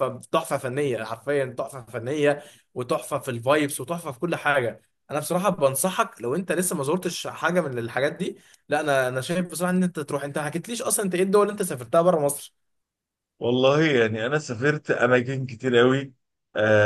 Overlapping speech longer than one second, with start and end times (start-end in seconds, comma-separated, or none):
none